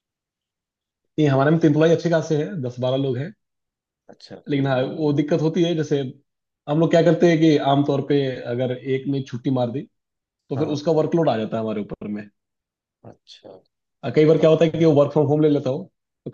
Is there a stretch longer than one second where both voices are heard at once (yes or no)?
no